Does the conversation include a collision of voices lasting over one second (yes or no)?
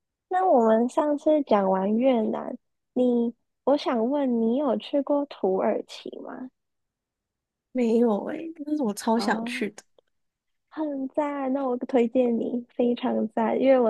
no